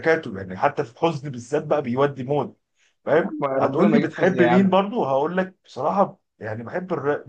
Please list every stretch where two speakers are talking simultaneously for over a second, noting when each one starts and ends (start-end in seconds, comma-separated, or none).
3.1-4.7